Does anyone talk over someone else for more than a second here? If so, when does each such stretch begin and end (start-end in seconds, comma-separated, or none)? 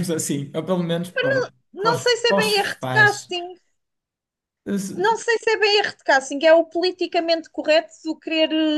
1.8-3.4